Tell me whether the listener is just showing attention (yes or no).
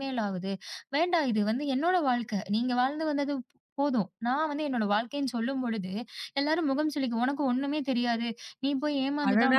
no